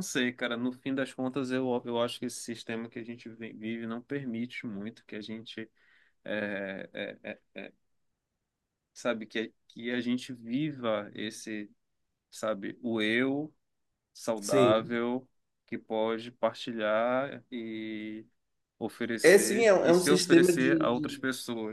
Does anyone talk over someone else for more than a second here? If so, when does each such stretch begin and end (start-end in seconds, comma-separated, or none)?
19.2-21.2